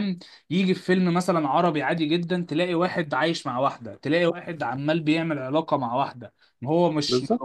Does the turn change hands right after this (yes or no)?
no